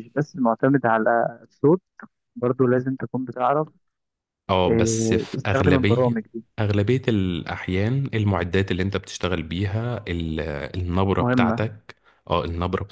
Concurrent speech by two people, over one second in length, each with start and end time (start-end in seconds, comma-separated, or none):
4.7-6.2